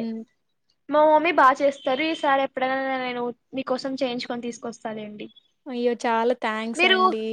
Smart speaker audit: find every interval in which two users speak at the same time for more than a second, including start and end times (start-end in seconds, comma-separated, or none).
none